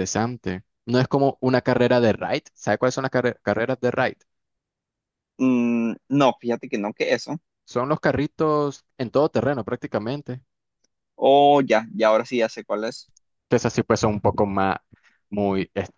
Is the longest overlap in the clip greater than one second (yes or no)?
no